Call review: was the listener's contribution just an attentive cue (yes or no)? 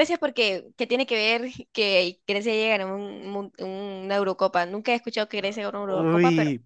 no